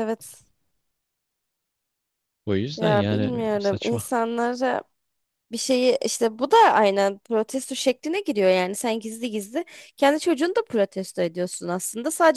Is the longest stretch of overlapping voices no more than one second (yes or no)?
no